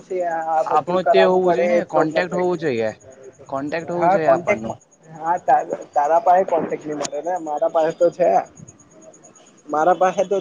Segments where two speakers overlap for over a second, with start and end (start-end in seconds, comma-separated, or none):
0.8-2.5